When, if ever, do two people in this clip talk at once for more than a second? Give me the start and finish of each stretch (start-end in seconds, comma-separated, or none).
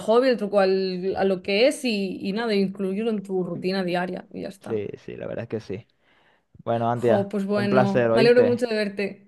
6.9-8.6